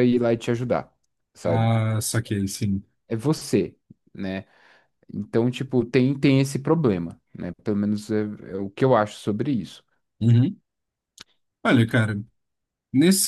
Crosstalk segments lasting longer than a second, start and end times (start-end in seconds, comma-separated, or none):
none